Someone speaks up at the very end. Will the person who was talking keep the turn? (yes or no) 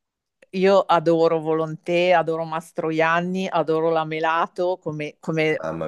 yes